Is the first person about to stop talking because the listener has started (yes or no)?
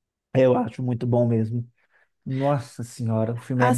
yes